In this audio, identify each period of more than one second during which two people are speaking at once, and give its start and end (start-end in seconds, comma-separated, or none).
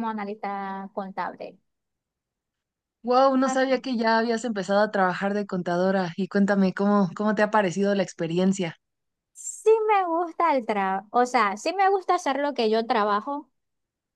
none